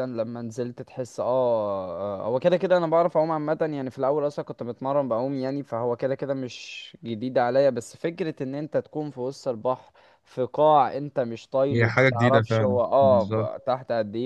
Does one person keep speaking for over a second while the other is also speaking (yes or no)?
yes